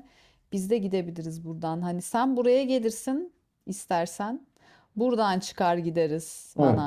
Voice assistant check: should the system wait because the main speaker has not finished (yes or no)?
no